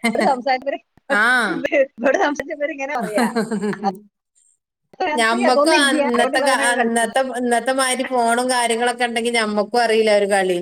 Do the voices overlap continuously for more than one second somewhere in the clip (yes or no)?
yes